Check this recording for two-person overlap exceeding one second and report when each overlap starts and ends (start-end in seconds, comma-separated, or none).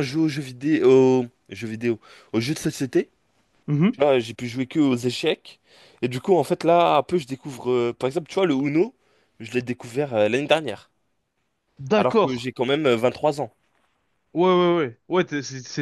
none